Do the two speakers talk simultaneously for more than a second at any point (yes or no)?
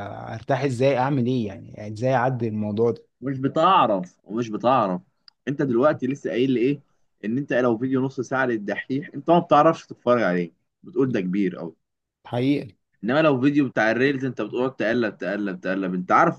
no